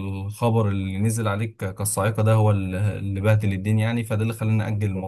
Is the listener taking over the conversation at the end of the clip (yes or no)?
no